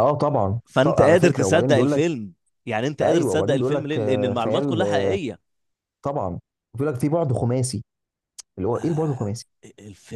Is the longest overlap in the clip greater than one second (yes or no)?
yes